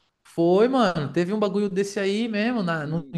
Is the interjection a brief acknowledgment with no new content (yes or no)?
yes